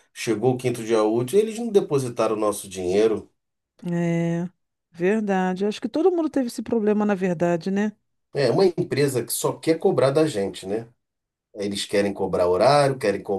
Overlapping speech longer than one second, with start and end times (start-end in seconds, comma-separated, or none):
none